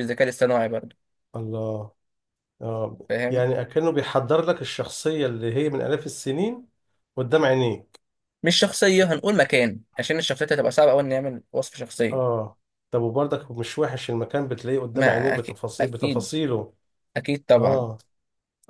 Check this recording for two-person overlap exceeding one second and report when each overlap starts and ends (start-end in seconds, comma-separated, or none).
14.9-16.3